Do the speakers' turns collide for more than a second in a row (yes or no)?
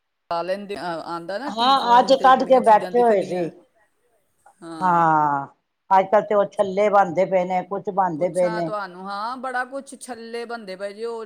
no